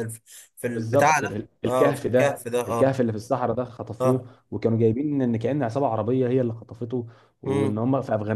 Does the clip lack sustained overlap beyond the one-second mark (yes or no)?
no